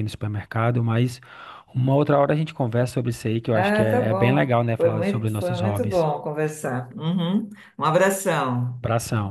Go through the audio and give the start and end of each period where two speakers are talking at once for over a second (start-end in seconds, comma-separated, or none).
3.5-6.1